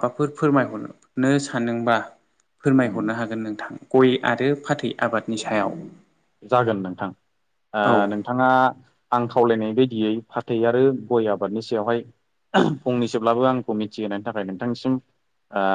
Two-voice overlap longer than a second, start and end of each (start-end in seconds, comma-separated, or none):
none